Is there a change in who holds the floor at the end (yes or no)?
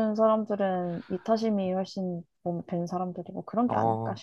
yes